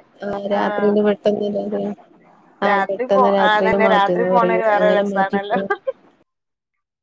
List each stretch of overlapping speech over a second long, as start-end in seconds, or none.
2.7-5.6